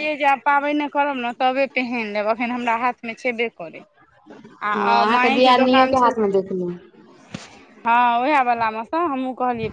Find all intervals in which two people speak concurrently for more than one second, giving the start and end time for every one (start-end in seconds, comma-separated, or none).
4.7-6.3